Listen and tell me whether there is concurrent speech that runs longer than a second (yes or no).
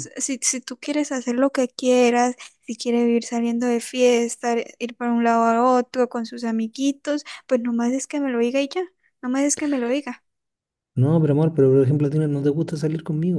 no